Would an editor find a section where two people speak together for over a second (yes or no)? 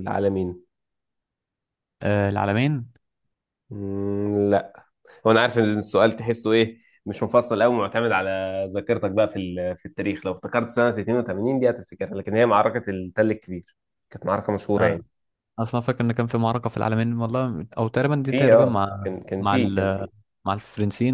yes